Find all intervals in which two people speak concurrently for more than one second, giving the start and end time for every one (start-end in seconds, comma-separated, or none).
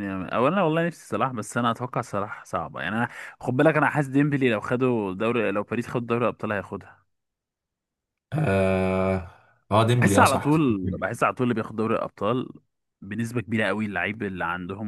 9.9-11.2